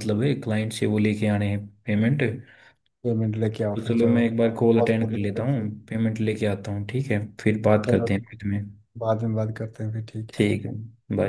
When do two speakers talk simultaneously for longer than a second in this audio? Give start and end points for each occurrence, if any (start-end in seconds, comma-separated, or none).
3.8-5.7